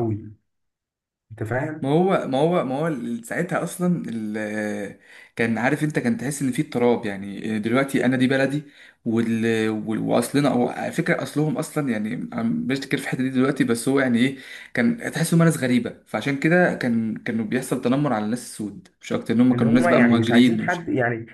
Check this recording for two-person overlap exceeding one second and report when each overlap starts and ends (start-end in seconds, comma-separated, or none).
19.5-20.8